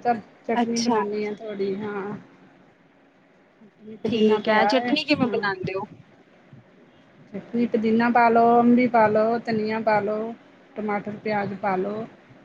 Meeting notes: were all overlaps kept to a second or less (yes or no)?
no